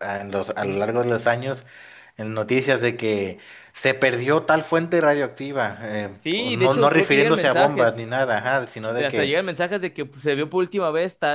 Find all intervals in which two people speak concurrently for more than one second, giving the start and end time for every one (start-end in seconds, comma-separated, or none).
6.2-8.2